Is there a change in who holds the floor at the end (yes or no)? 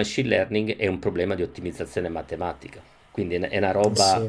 no